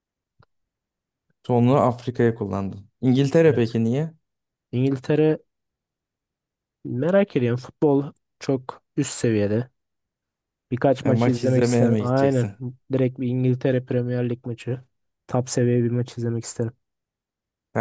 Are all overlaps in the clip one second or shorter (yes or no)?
no